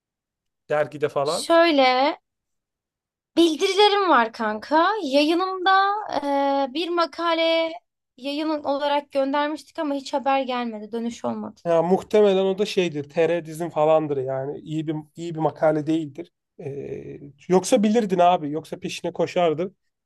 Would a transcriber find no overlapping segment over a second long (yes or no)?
yes